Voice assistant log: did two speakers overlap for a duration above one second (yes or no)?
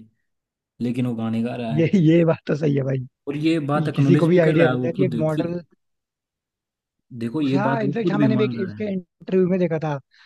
yes